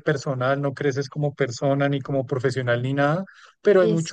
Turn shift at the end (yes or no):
no